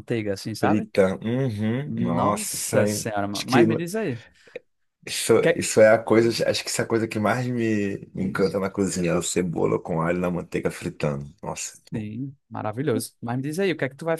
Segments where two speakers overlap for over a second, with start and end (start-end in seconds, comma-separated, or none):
1.9-3.6